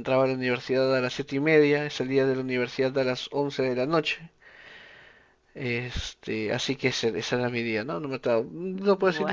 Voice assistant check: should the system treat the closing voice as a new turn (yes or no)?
no